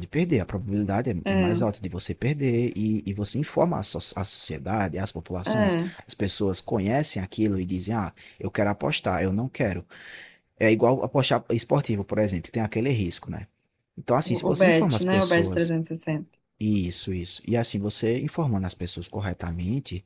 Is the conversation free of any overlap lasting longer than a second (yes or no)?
no